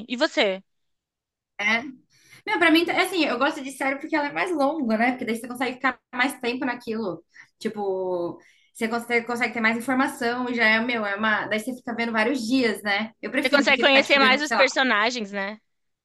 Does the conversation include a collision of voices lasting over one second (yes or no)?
yes